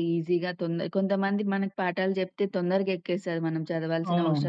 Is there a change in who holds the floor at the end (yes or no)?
no